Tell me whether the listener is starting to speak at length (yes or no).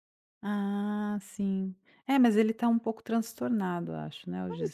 yes